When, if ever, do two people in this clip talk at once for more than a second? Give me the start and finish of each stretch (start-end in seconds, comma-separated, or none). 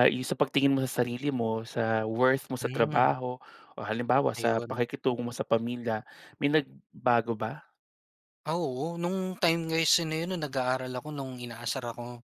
none